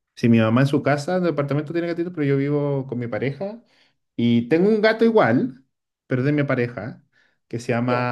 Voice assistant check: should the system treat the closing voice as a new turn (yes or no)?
no